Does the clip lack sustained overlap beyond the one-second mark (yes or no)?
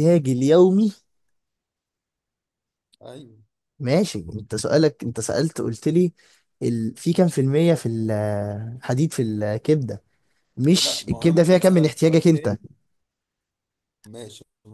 no